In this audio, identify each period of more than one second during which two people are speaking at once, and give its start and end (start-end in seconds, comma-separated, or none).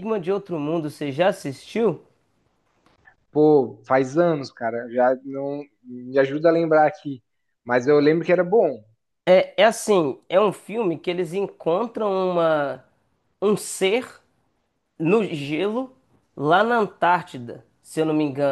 none